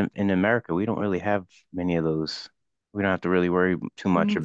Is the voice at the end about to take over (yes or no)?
yes